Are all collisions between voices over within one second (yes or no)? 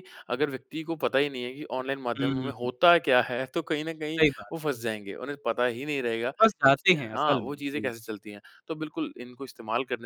no